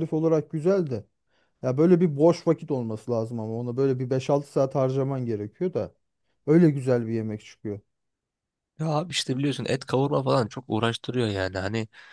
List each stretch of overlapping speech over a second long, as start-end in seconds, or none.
none